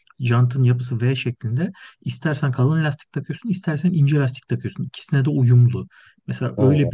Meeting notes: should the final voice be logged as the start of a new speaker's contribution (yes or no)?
no